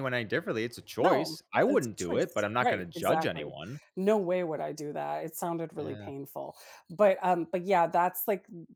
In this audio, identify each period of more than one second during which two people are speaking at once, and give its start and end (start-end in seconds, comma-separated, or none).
1.0-3.5